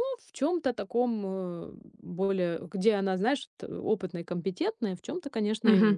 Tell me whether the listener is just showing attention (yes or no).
no